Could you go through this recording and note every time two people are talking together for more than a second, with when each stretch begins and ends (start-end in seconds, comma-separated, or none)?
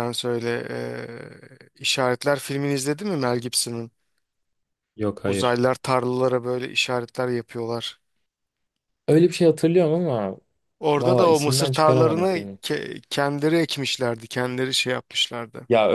11.0-12.6